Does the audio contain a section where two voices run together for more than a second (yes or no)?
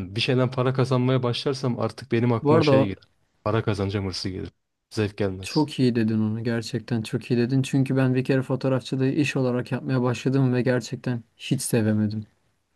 no